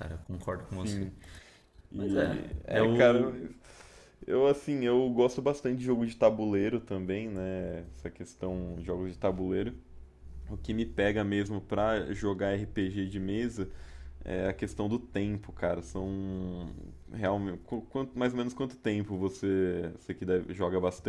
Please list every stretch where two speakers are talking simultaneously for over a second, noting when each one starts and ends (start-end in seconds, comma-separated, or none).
1.9-3.3